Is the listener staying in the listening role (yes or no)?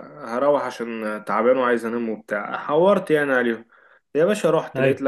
yes